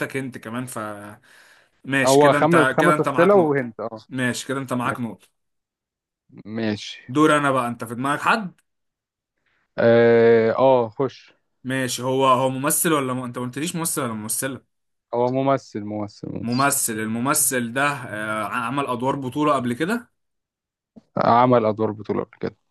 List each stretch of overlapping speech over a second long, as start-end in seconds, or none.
2.0-3.6